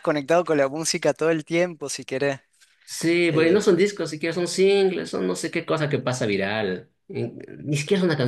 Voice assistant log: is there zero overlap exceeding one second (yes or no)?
yes